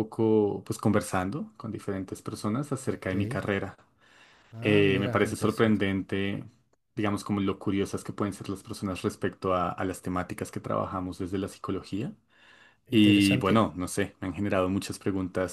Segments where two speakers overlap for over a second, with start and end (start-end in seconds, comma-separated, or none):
4.6-5.8